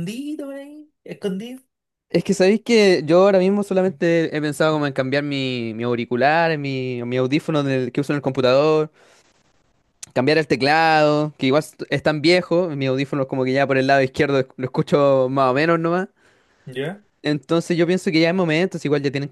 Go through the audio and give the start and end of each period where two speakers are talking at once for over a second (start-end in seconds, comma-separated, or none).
none